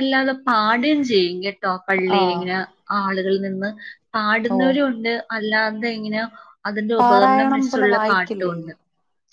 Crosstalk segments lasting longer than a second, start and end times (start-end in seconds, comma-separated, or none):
7.0-8.6